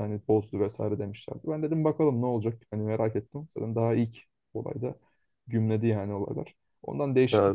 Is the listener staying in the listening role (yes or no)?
yes